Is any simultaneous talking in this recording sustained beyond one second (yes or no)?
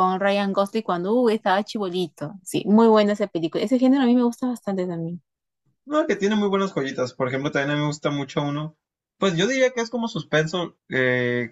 no